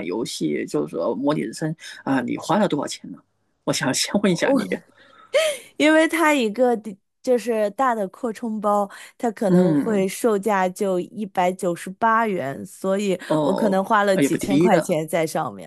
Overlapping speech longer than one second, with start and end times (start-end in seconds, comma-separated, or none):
13.3-15.0